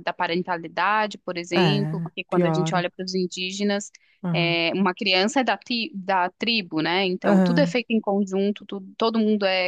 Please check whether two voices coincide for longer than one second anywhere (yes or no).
yes